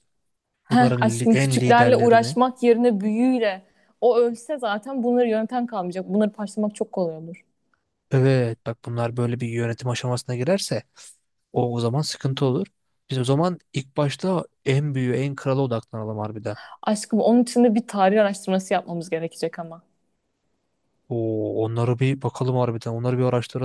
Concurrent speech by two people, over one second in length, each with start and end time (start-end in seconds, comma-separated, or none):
0.7-2.4